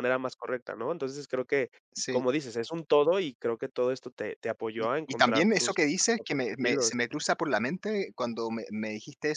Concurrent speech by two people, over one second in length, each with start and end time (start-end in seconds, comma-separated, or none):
4.8-7.0